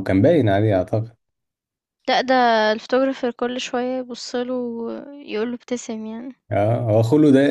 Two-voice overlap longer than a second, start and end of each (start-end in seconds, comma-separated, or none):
none